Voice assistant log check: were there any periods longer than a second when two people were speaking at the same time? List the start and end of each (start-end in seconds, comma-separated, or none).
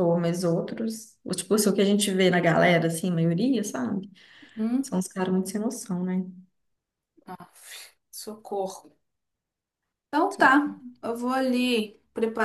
none